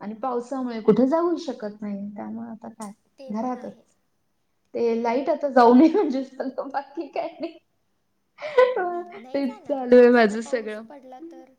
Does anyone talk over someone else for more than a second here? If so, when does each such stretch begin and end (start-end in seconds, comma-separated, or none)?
9.3-10.8